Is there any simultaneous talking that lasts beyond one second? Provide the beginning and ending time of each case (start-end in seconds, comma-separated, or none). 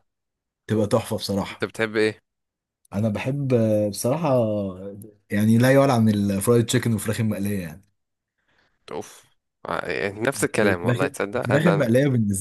10.4-11.9